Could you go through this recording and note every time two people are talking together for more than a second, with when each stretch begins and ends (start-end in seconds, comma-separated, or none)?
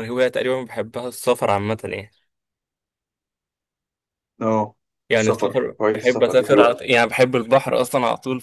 5.2-6.8